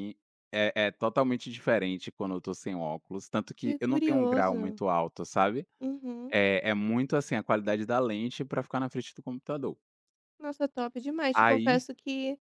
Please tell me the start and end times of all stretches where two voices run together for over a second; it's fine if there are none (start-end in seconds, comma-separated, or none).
3.6-4.8